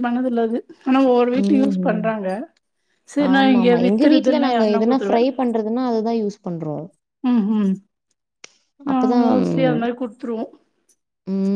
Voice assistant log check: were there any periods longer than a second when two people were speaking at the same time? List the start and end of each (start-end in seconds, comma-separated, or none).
3.3-5.2